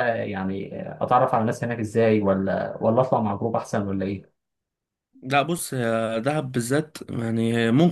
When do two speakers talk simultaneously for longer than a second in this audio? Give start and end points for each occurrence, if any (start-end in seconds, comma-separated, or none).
none